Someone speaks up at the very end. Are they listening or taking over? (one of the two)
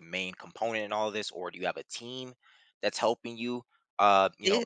listening